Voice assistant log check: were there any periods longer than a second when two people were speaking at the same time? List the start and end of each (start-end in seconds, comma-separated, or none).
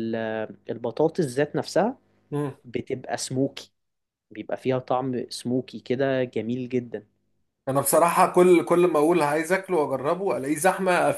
none